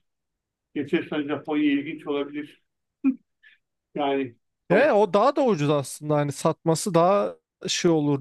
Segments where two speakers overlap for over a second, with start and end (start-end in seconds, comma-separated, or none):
none